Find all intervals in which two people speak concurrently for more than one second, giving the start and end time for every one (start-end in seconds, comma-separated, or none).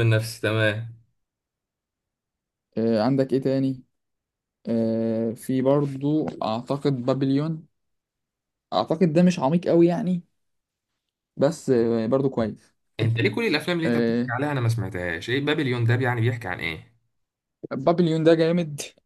none